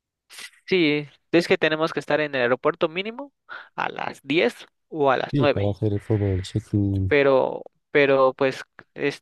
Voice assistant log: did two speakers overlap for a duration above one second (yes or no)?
no